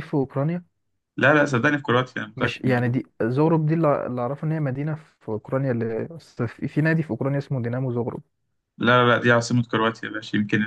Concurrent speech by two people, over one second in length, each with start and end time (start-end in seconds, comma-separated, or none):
none